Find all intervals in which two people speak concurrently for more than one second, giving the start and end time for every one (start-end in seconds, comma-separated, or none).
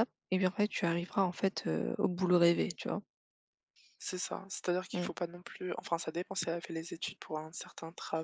none